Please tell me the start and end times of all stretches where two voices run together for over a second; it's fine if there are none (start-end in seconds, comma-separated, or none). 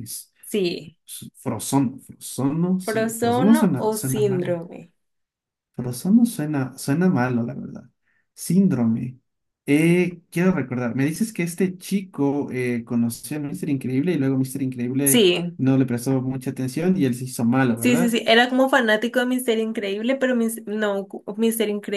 2.8-4.6